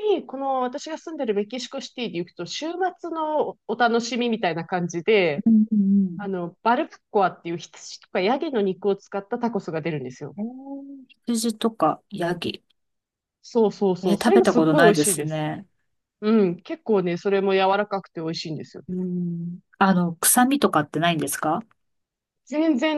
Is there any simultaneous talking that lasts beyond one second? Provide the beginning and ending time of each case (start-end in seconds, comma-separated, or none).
14.0-15.4